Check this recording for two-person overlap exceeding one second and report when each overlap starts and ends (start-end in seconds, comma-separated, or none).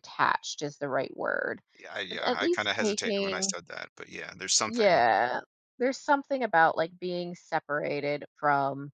2.1-3.5